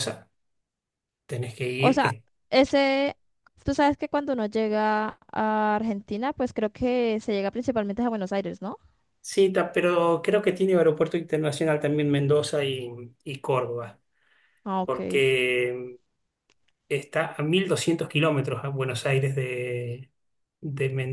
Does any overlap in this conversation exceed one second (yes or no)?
no